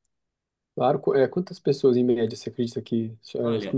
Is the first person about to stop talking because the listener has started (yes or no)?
yes